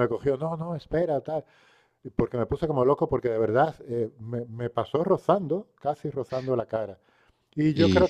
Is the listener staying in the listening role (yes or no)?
yes